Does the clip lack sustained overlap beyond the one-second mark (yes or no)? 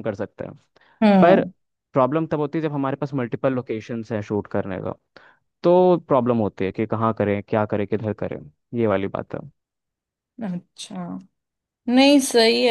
yes